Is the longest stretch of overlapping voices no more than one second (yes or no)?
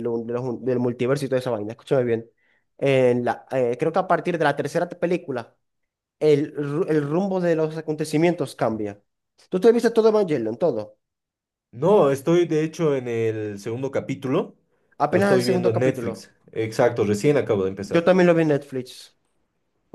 no